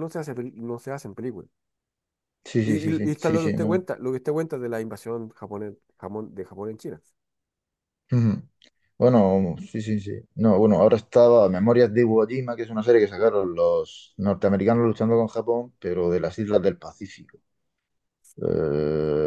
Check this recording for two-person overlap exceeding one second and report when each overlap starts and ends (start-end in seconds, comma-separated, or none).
2.6-3.9